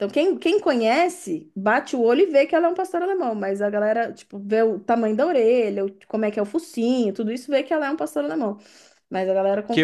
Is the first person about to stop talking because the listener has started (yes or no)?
yes